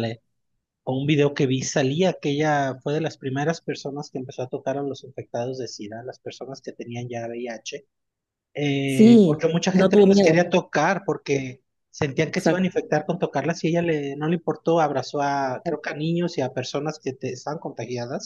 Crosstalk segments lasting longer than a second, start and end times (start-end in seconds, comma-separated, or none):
8.8-10.3